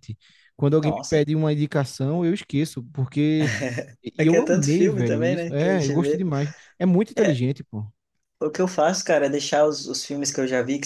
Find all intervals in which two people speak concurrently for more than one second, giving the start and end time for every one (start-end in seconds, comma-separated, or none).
4.2-6.2